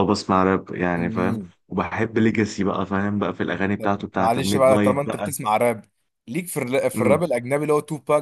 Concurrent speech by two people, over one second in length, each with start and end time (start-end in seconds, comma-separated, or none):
3.8-5.3